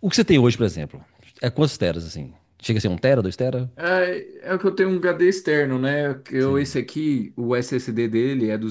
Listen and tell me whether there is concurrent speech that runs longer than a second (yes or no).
no